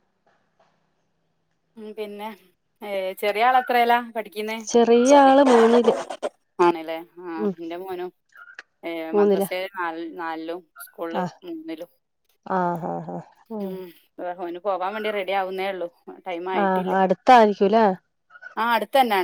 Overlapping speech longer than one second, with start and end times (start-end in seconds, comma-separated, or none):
none